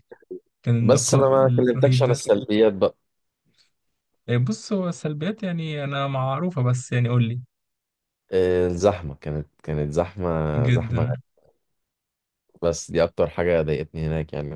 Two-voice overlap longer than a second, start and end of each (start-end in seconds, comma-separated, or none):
0.8-2.2